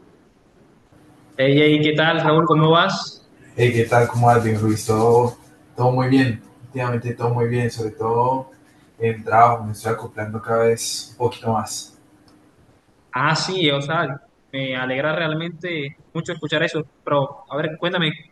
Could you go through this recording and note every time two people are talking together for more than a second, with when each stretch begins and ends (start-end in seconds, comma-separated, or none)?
none